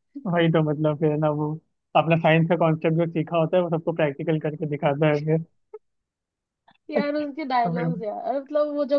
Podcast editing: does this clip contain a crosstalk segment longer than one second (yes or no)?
no